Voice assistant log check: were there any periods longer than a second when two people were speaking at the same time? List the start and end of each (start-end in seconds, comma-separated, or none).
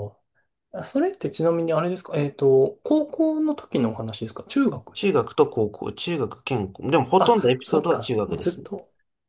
7.2-8.7